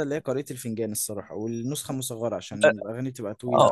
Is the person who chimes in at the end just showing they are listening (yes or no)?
no